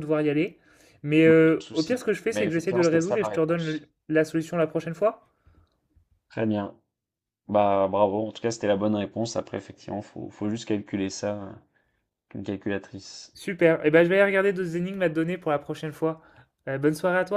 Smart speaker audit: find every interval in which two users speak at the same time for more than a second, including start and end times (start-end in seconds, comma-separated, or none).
1.2-3.8